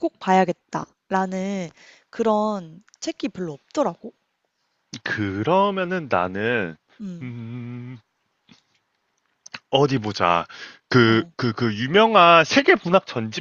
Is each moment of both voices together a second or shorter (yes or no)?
yes